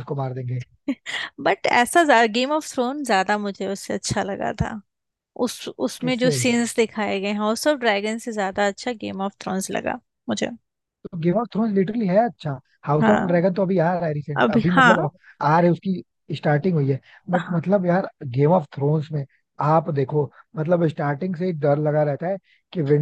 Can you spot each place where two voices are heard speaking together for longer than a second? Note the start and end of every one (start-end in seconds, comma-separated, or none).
none